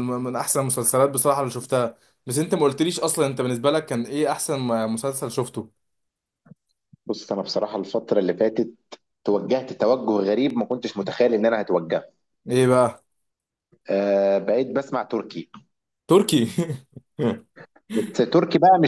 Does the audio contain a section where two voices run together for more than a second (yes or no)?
no